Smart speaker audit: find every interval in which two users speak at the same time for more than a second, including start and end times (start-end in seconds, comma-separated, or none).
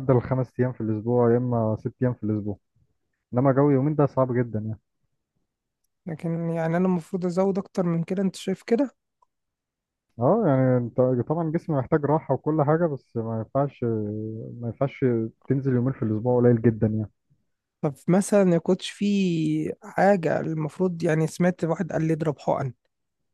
none